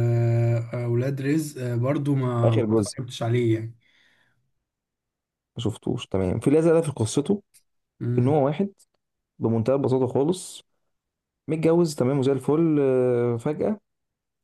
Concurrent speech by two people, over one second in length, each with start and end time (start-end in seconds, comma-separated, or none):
none